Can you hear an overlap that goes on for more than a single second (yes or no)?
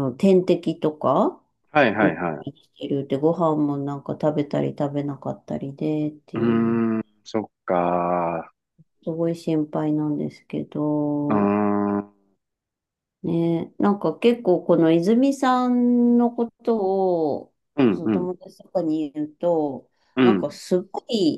no